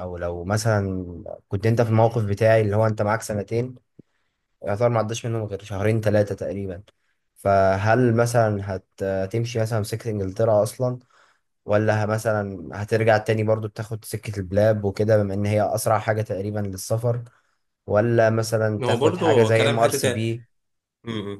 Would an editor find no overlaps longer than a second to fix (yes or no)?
no